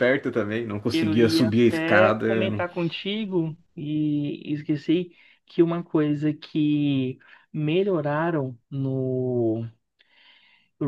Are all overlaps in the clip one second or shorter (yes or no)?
no